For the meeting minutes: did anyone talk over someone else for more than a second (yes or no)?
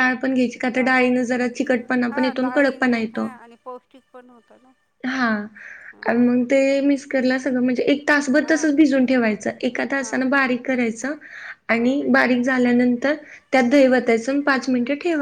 no